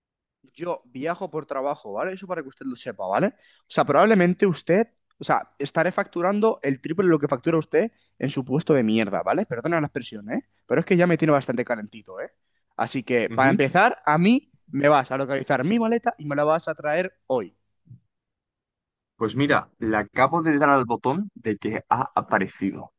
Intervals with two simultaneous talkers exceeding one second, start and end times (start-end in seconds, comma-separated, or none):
none